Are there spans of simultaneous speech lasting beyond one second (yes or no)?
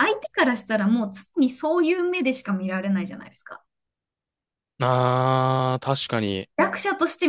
no